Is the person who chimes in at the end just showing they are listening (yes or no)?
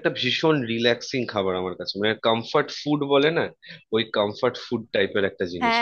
no